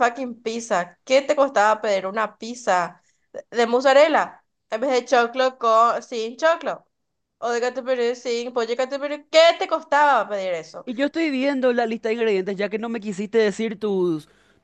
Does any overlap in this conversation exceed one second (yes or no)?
no